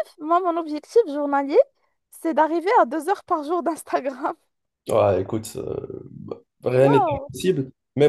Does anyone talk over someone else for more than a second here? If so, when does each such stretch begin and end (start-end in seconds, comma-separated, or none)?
none